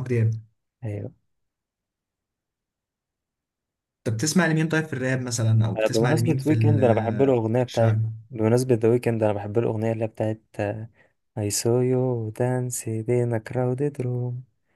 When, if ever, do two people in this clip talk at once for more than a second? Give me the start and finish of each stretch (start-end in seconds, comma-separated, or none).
5.8-7.9